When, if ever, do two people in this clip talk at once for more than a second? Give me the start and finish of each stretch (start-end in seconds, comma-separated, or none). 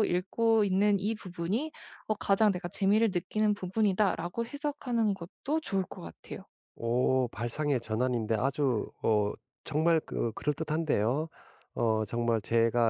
none